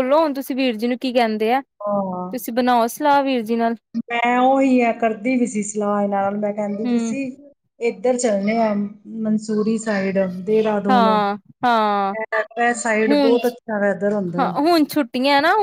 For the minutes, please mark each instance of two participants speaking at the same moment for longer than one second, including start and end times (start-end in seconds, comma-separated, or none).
none